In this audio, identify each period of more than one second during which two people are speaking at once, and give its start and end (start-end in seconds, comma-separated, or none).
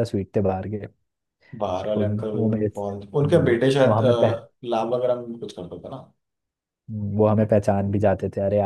1.6-4.3